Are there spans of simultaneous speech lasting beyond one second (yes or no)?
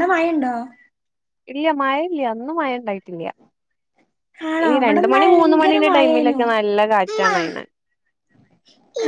yes